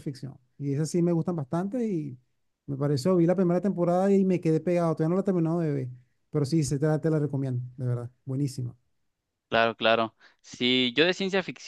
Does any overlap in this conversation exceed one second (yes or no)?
no